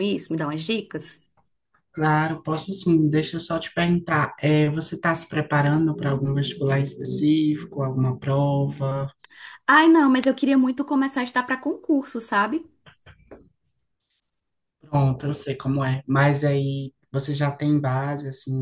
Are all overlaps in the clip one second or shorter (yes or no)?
yes